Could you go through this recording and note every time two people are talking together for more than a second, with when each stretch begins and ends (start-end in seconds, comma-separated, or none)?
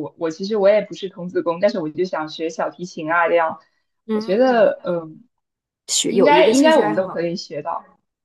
6.1-7.3